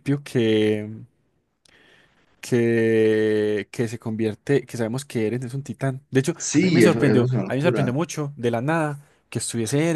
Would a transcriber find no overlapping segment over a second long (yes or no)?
no